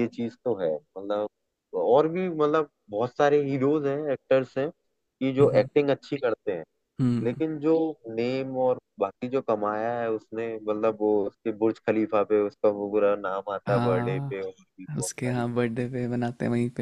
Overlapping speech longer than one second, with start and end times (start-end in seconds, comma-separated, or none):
13.7-15.4